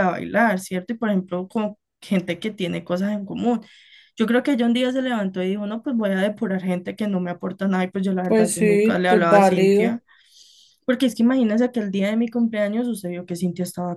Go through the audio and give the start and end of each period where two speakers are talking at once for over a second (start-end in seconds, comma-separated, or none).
8.2-10.0